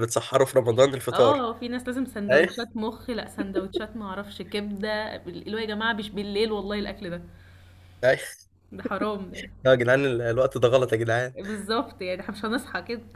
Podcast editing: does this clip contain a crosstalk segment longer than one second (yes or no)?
no